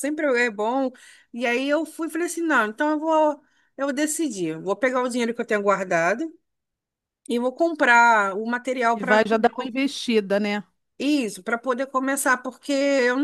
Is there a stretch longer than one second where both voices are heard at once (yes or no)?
no